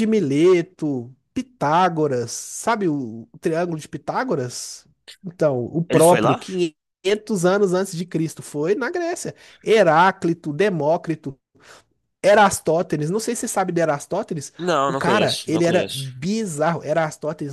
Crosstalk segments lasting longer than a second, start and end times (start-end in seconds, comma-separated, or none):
14.9-16.1